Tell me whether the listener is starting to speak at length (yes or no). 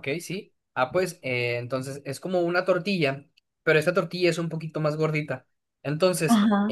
no